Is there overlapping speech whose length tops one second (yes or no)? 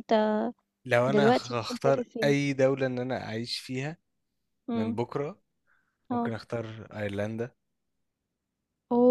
yes